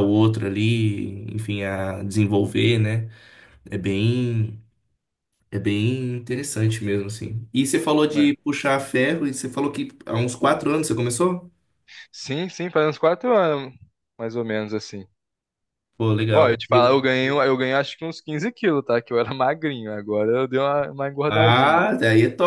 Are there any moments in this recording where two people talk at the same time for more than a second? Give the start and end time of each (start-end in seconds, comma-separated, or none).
none